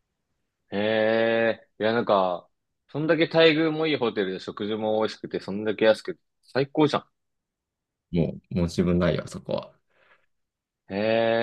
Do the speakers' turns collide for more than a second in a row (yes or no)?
no